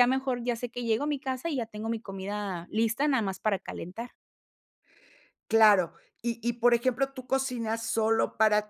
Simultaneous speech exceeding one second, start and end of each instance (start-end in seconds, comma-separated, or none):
none